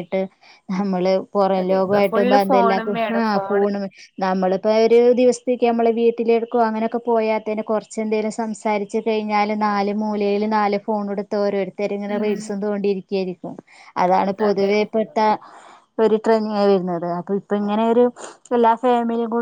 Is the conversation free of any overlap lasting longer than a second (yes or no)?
no